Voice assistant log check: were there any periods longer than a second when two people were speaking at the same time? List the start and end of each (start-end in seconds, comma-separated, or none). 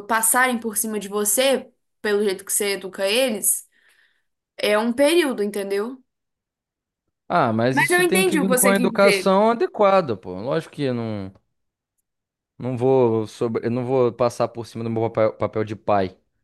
7.7-9.3